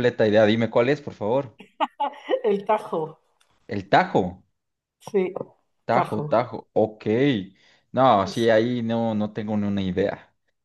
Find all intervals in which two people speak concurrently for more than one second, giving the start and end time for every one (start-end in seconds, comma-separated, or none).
none